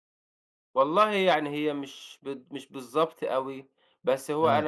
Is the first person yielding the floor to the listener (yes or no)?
no